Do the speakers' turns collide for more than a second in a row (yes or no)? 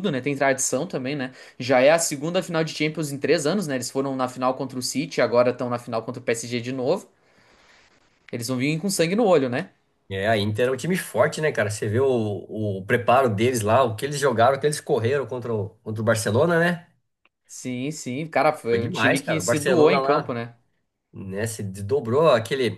yes